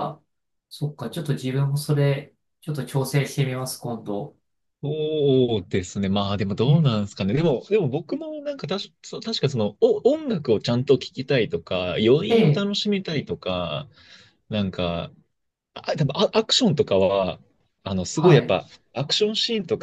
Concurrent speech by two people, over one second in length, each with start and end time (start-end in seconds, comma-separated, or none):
none